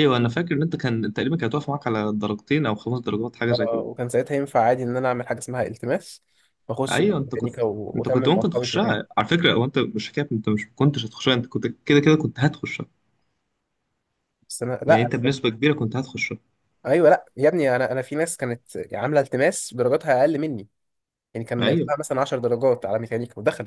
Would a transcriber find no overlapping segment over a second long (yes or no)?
no